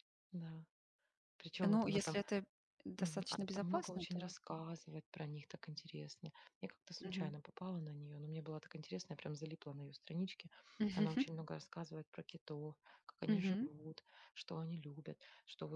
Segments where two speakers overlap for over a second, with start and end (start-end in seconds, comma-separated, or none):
3.0-4.3